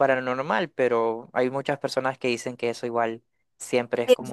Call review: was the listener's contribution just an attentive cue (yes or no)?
no